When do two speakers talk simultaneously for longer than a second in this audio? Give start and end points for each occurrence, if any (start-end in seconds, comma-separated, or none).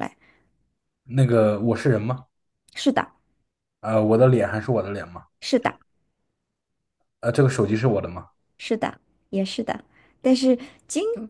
none